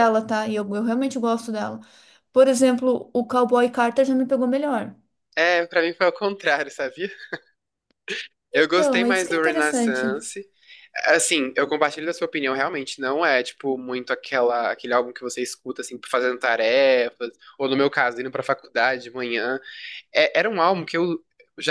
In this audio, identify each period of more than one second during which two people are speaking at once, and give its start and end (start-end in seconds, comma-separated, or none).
8.5-10.1